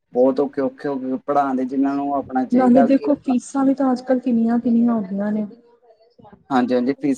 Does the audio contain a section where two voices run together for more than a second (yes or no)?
no